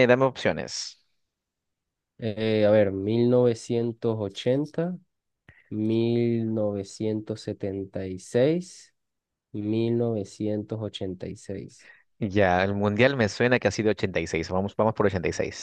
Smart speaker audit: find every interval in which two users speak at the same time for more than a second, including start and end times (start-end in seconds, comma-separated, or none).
none